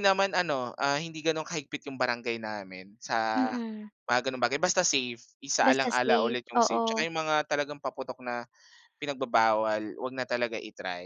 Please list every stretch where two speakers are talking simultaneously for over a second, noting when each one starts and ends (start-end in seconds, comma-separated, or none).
5.6-7.1